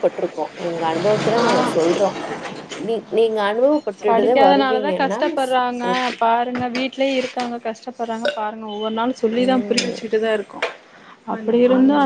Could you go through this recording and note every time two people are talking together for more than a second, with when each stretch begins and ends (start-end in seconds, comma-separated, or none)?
none